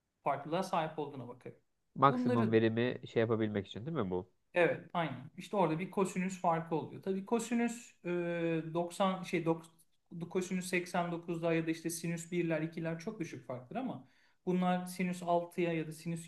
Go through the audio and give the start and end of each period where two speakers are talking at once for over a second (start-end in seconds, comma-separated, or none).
none